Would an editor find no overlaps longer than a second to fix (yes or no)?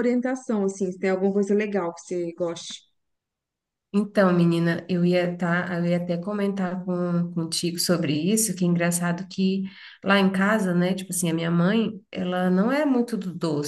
yes